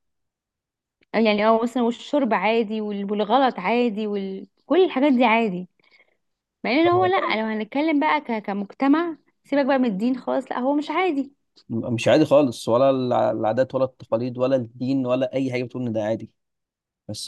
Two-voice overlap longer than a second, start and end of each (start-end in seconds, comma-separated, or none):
none